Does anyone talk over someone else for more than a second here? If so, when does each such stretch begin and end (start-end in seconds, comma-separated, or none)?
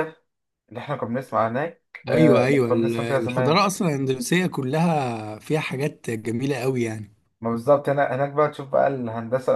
2.1-3.6